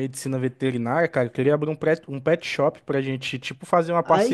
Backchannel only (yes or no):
no